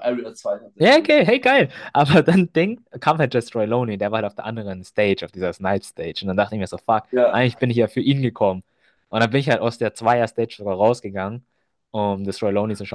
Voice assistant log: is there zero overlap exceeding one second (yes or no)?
yes